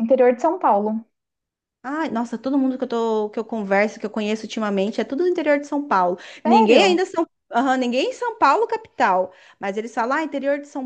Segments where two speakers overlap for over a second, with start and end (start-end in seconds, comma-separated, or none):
none